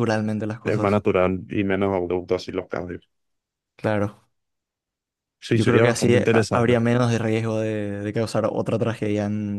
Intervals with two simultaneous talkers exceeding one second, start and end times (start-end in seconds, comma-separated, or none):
5.5-6.8